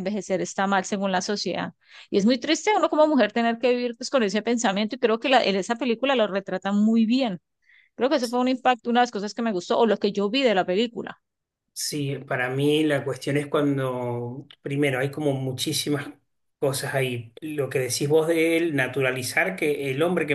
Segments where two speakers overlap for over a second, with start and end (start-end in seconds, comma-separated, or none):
none